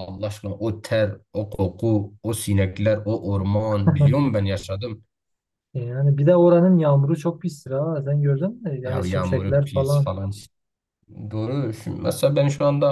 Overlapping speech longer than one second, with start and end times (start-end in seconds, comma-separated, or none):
8.8-10.1